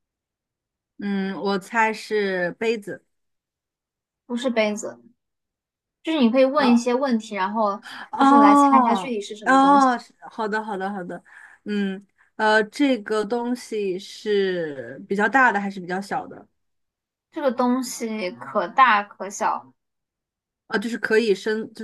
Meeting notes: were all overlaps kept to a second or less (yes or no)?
no